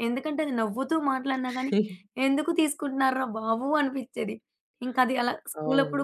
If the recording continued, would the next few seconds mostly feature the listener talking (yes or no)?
yes